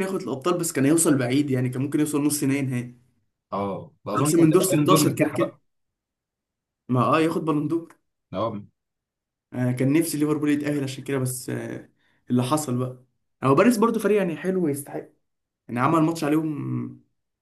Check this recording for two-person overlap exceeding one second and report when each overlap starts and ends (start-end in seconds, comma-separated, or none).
4.2-5.5